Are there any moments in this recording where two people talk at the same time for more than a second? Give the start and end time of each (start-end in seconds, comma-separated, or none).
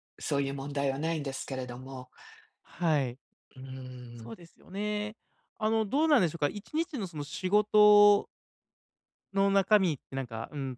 none